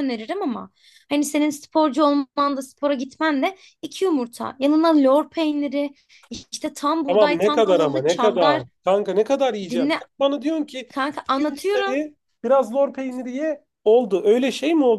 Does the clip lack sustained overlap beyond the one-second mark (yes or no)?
no